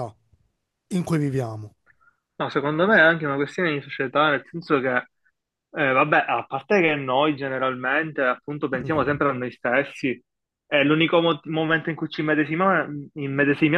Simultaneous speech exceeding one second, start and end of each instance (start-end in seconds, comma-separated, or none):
none